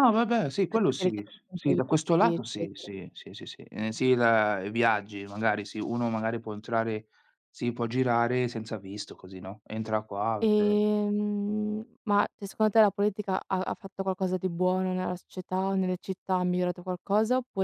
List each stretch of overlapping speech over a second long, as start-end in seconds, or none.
0.5-2.9